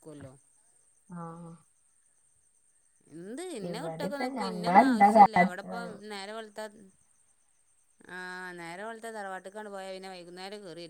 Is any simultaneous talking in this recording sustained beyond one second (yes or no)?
yes